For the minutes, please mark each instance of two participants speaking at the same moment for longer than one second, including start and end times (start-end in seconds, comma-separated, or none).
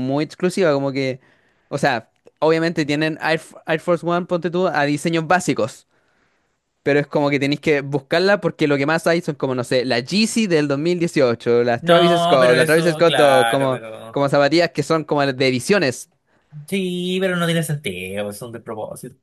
11.8-14.2